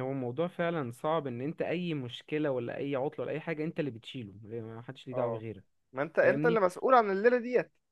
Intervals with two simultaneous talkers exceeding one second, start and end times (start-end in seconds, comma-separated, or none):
none